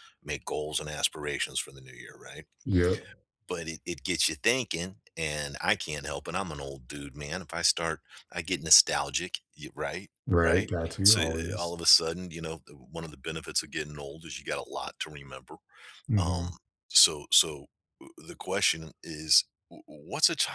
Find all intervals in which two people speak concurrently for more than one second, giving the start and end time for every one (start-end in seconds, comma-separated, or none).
10.3-11.8